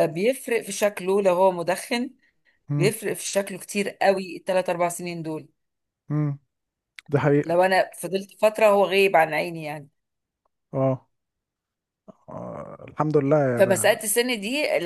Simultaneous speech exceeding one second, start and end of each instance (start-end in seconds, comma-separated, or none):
none